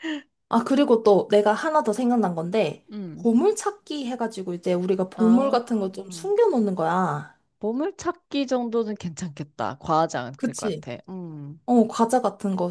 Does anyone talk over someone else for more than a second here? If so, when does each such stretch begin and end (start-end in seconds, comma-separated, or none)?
none